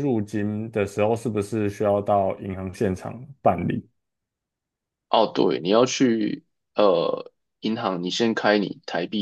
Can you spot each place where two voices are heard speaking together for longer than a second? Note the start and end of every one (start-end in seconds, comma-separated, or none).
none